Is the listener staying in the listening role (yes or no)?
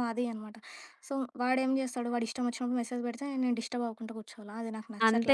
no